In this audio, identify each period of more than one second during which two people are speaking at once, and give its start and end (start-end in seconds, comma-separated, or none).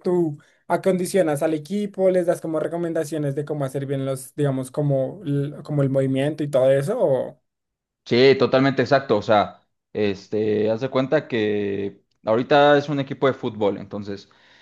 none